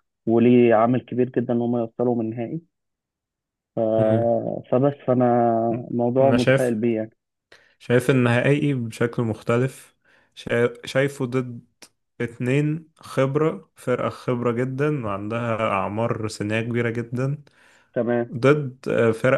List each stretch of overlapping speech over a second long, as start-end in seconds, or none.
none